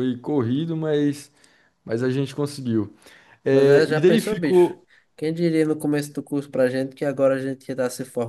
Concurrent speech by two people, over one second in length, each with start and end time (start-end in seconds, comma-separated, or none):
3.5-4.8